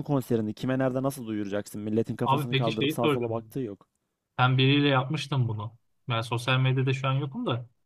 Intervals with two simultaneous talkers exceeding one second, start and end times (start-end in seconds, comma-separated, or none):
2.2-3.6